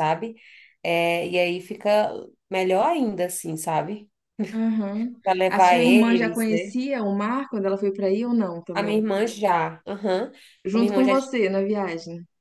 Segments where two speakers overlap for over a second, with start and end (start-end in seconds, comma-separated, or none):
5.2-6.8